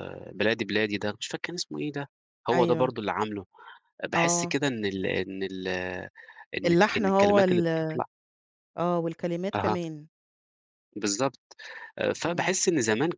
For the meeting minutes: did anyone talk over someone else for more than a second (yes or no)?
yes